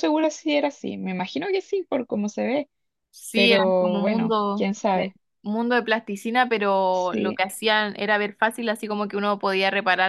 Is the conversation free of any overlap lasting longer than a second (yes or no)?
no